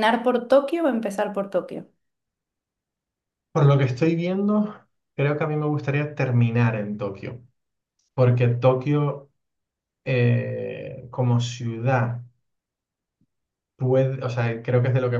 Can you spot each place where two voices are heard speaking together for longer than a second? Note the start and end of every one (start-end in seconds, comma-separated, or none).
none